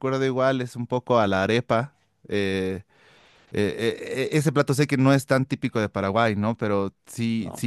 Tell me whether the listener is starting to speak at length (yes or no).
no